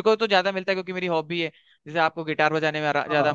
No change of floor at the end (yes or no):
no